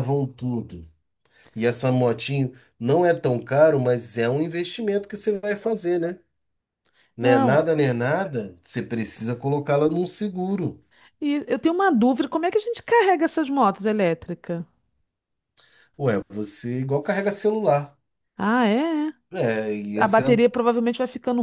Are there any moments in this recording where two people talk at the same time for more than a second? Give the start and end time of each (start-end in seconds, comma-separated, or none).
none